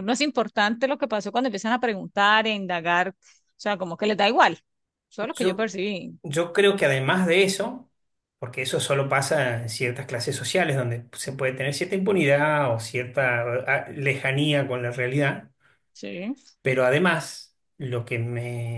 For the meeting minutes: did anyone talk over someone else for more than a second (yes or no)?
no